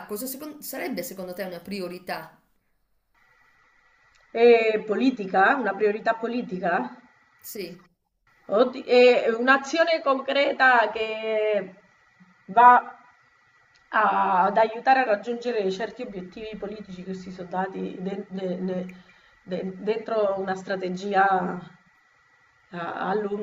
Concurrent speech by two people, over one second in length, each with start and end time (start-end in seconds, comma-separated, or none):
none